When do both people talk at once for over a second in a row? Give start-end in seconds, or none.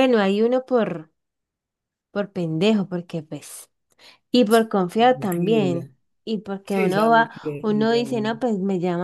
4.5-5.9, 6.7-8.0